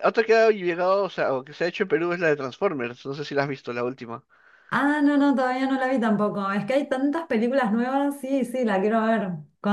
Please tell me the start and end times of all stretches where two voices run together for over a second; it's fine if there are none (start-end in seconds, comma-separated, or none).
none